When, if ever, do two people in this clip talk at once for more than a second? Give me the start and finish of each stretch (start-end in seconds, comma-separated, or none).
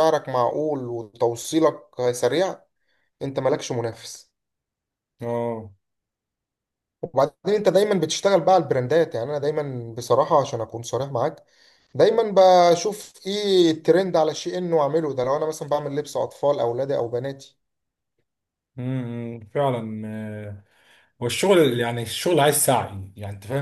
none